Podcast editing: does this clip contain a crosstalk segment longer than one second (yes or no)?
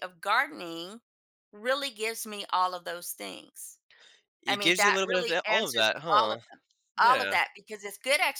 yes